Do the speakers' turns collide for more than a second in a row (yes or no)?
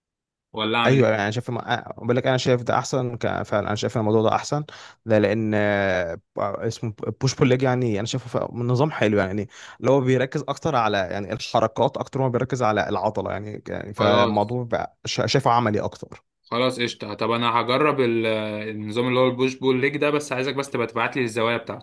no